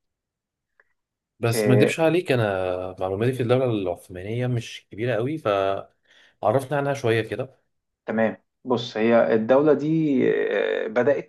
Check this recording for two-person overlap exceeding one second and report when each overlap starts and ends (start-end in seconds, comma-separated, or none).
none